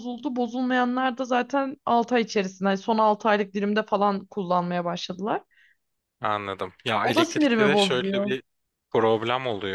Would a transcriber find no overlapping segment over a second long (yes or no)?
no